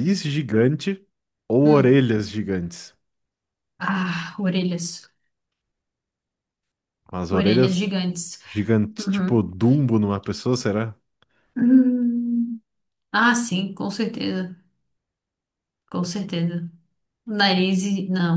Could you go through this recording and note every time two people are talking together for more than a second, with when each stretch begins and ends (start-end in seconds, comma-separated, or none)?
none